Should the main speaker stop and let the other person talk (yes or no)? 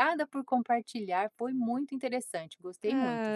yes